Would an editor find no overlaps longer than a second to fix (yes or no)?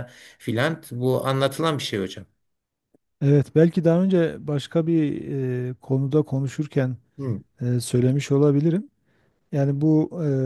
yes